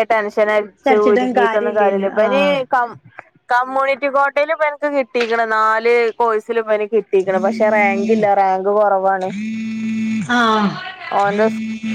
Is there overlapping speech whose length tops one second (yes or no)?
yes